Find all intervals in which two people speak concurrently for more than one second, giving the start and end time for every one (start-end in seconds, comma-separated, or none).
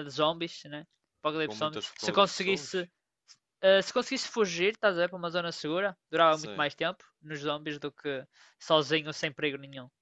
1.4-2.9